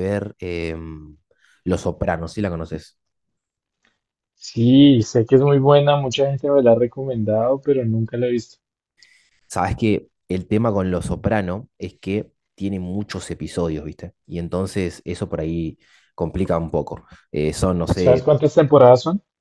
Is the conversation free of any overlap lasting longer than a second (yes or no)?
yes